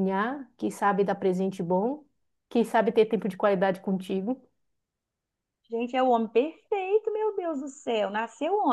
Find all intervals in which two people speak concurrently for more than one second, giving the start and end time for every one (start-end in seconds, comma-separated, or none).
none